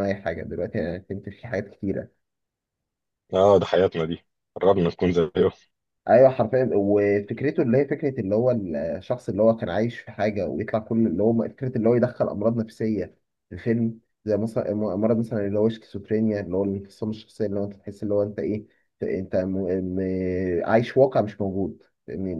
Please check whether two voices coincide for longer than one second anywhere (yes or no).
no